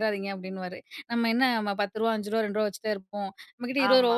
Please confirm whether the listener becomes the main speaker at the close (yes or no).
no